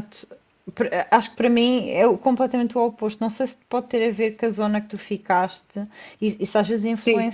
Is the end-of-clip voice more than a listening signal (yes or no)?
no